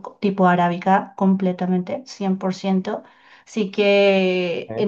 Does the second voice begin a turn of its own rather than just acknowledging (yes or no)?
no